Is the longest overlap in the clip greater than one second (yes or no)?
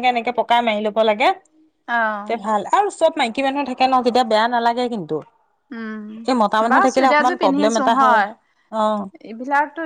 yes